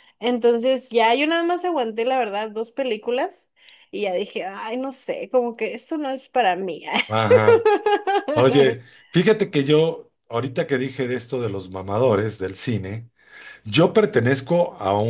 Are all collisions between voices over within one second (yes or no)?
yes